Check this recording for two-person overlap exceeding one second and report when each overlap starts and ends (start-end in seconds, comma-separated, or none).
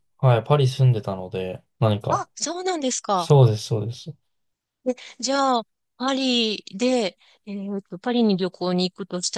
none